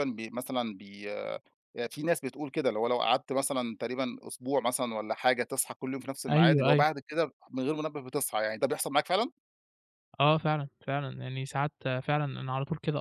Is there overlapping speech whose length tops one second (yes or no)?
no